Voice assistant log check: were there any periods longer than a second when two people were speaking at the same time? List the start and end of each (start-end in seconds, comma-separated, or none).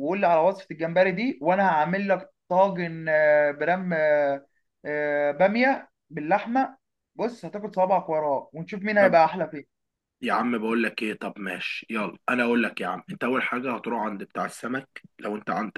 none